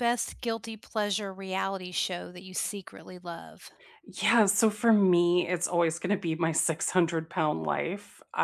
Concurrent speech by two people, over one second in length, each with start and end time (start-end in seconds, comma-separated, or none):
none